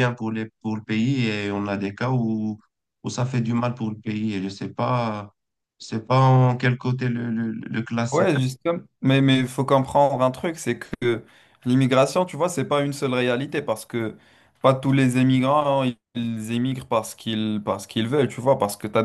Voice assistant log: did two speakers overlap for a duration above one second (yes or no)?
no